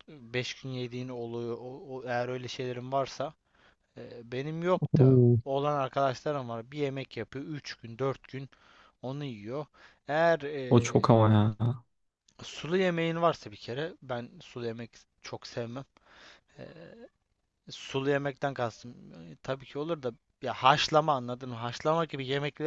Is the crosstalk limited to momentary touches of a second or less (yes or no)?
yes